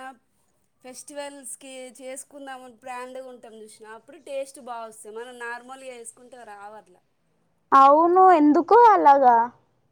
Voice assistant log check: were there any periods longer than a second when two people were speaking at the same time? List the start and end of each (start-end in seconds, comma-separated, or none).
none